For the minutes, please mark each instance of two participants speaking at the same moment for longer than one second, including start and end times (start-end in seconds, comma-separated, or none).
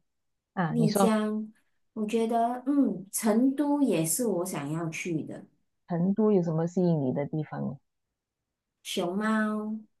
none